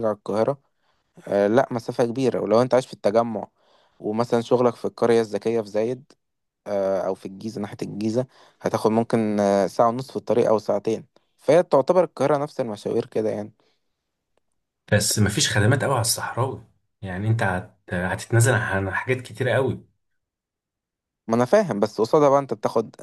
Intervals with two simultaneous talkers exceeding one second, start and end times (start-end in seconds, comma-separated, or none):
none